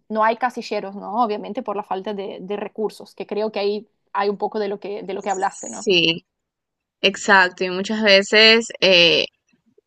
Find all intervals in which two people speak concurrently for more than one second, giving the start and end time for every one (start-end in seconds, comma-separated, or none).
none